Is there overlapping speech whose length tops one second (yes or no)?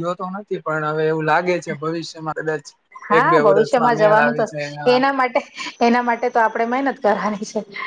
yes